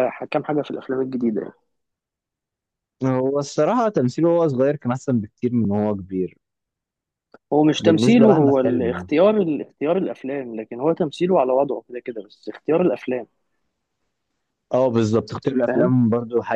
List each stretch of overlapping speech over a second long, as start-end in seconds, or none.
7.8-9.1